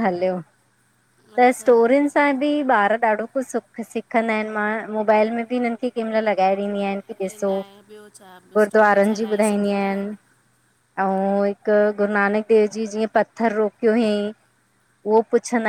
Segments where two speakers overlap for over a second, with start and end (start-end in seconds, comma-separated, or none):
8.7-10.0